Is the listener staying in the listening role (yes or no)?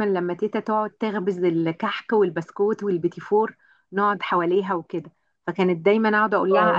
yes